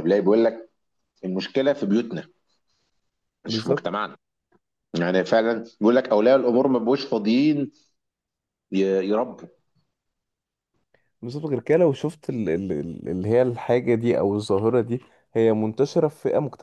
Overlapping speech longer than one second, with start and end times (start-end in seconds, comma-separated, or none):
none